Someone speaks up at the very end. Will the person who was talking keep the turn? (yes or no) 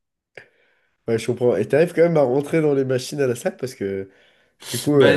no